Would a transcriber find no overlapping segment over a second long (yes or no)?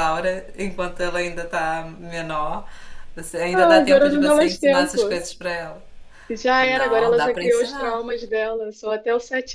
no